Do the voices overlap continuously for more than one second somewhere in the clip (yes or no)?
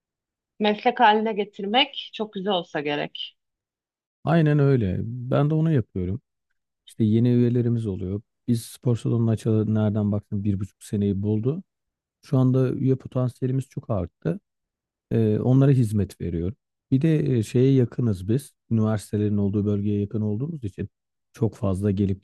no